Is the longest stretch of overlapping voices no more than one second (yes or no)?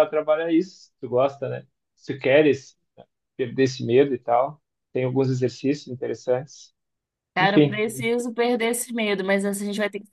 yes